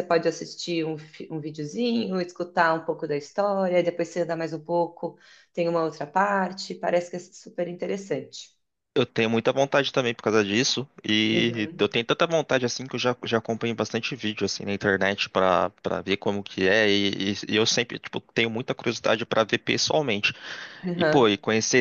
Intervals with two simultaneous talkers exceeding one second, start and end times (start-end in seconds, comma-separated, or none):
none